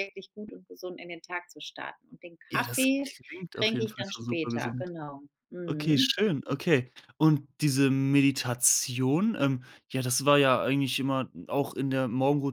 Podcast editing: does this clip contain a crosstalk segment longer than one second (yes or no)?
yes